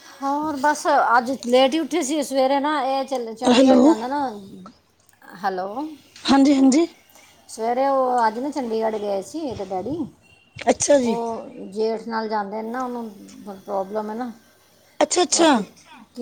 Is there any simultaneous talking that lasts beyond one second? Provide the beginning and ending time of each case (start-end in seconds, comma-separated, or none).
none